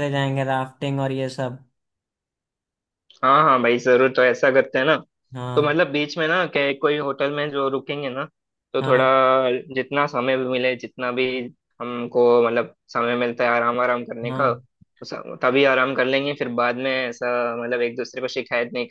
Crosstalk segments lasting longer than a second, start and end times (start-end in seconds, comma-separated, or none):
none